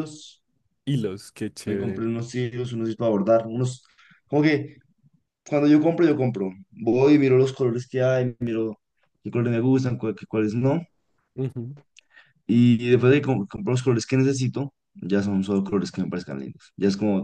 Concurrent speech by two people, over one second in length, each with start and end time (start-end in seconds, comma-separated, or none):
none